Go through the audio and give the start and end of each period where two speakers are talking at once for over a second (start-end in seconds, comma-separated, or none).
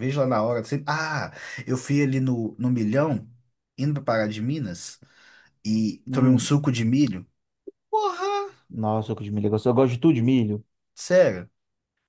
none